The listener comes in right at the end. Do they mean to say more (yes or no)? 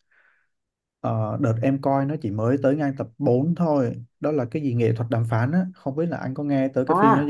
yes